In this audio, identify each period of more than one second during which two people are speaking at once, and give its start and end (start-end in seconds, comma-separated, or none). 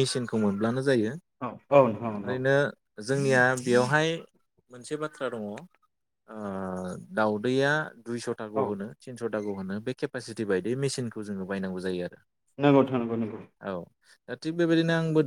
none